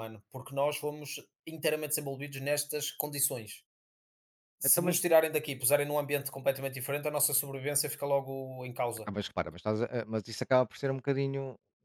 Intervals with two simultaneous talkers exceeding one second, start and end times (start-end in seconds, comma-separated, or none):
none